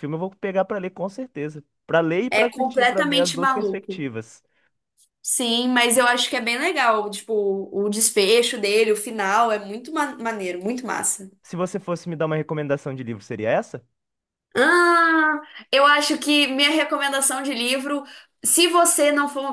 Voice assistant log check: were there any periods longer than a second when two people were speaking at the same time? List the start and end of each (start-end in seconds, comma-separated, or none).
2.3-4.0